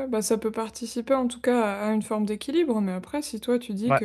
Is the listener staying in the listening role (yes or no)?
yes